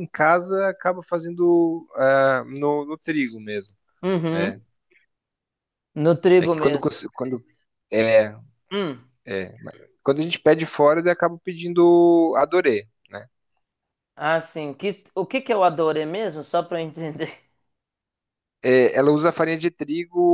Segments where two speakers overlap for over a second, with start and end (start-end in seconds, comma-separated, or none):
none